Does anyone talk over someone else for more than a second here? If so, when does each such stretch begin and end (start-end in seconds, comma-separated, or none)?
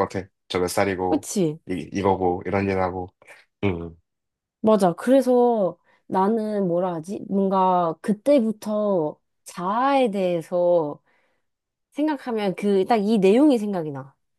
none